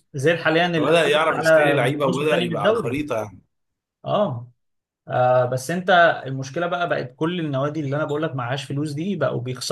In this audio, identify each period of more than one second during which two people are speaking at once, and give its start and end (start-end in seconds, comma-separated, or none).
0.8-3.0